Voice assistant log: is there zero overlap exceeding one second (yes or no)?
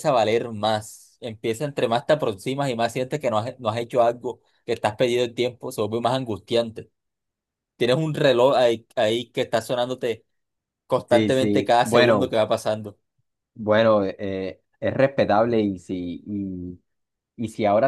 no